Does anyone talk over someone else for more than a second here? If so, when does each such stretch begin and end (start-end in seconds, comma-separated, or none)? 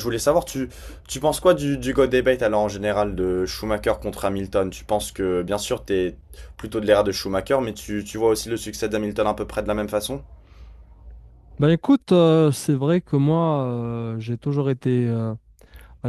none